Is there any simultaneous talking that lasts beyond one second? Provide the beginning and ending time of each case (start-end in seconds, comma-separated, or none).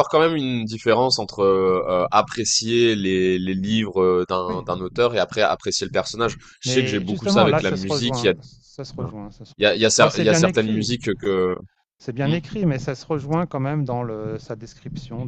6.6-8.3, 9.6-10.9